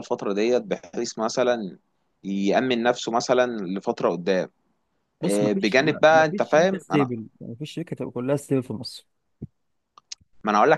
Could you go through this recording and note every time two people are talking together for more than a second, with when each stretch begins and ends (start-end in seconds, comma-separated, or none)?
5.2-7.1